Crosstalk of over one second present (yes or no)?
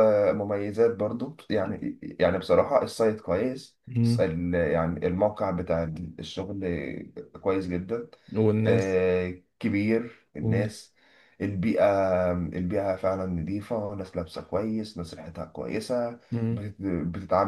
no